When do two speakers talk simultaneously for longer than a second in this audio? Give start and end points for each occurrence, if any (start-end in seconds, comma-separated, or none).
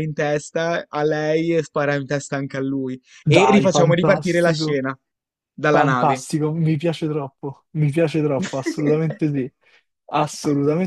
3.2-4.8